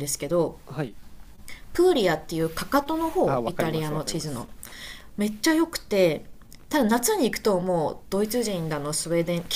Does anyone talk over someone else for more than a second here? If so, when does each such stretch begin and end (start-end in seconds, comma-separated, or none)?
3.2-4.5